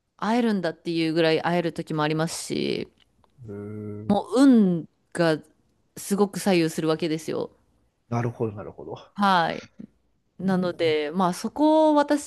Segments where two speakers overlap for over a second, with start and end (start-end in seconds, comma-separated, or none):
none